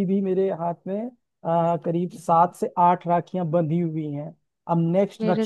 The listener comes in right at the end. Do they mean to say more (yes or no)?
no